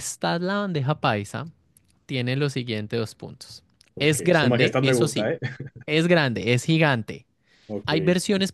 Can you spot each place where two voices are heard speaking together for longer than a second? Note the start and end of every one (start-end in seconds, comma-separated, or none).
4.0-5.3